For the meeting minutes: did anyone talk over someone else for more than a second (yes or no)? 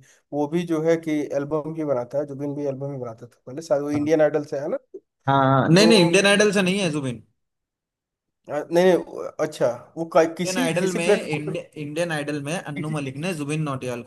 yes